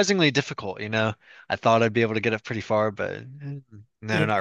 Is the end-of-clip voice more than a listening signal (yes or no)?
yes